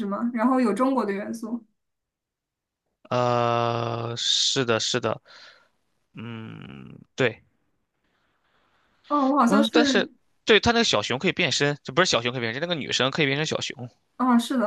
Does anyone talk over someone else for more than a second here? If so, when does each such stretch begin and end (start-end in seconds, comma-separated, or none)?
none